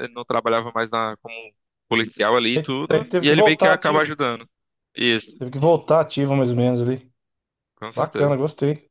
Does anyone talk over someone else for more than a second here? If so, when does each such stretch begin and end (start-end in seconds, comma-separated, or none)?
2.5-4.1